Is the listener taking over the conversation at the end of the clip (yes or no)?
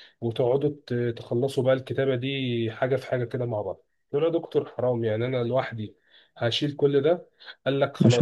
no